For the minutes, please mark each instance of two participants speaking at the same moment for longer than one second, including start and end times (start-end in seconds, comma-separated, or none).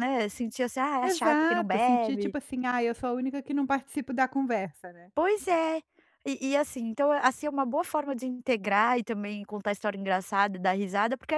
1.0-2.4